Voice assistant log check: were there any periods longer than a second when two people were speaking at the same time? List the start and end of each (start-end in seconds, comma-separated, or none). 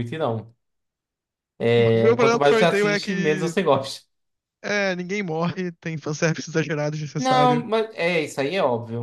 1.8-3.5